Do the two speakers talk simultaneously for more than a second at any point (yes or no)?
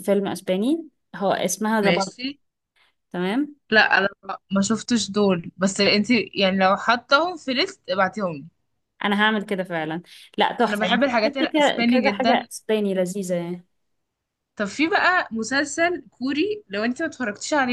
yes